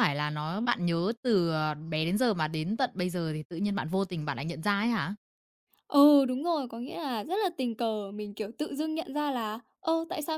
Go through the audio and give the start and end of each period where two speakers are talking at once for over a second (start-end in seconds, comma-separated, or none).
none